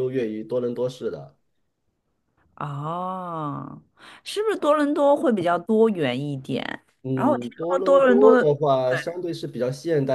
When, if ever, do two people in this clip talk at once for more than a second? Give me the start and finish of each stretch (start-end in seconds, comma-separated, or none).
7.1-8.5